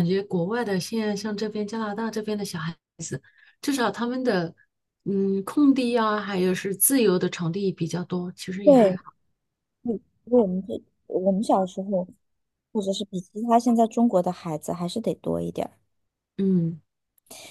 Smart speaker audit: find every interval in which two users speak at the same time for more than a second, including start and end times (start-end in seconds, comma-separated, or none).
none